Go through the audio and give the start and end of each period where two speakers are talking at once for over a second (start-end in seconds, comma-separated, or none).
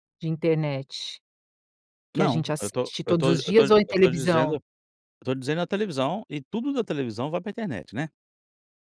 2.1-4.6